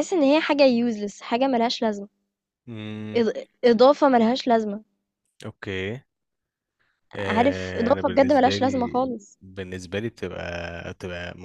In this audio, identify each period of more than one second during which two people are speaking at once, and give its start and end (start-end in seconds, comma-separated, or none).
7.2-9.4